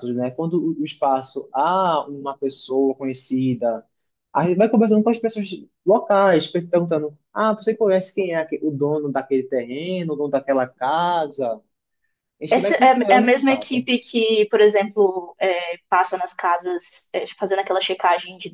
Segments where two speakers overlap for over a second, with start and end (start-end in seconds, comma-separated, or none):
12.5-13.8